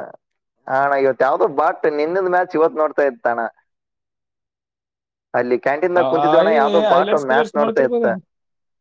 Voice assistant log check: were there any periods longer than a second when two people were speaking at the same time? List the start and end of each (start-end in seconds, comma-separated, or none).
6.0-8.1